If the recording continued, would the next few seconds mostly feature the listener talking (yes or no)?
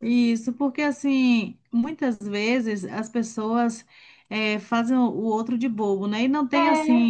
no